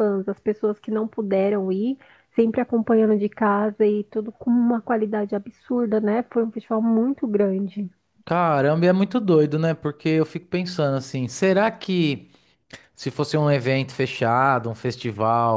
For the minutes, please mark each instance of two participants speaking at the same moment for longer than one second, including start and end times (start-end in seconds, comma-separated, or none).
none